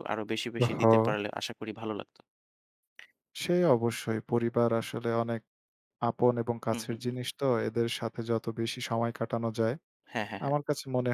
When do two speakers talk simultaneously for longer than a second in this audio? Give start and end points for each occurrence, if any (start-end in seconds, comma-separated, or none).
none